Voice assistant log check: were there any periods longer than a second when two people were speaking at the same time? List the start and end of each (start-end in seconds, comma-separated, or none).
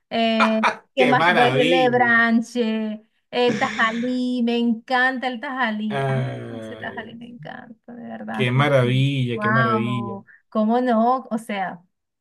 1.0-2.2, 5.9-7.1, 8.3-10.2